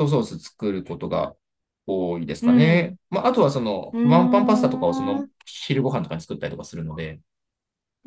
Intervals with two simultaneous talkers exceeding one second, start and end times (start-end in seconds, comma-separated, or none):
3.9-5.3